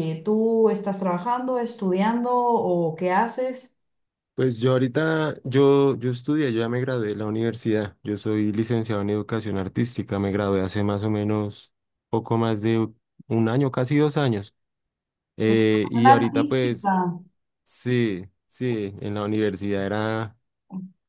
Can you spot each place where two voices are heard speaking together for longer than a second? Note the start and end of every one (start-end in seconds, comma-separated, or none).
15.5-16.9